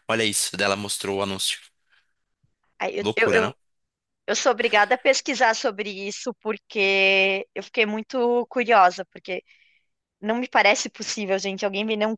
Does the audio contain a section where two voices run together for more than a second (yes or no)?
no